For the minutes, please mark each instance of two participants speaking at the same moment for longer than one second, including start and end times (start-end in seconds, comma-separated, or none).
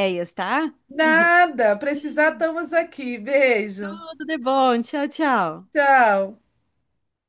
none